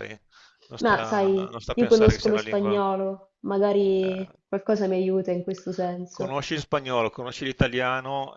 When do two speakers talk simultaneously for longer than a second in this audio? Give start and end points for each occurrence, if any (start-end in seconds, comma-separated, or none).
0.8-2.8